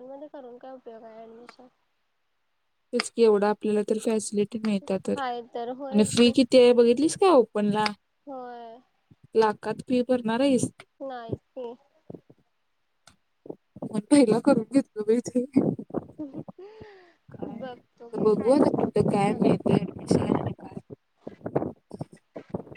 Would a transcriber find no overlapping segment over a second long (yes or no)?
no